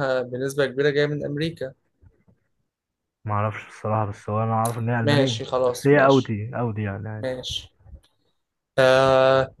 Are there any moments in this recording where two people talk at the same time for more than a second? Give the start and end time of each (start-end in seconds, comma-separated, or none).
5.0-6.3